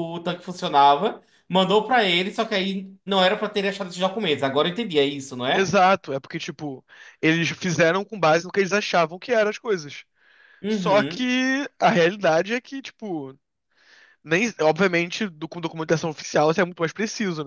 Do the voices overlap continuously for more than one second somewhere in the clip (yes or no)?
no